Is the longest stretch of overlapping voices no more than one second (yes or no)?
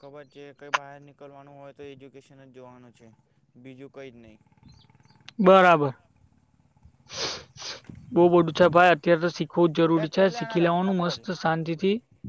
no